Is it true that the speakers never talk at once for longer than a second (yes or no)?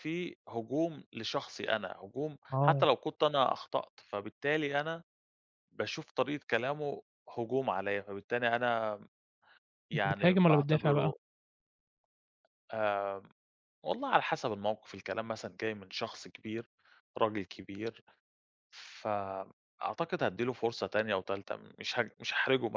no